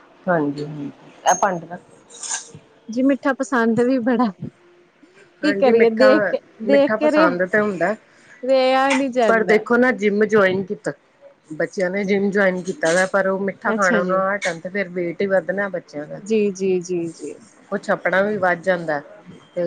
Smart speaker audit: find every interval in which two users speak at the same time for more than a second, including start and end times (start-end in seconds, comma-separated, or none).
5.4-7.3